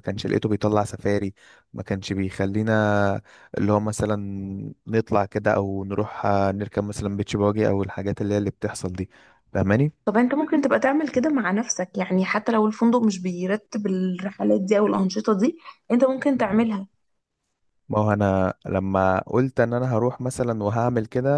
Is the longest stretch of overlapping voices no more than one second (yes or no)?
yes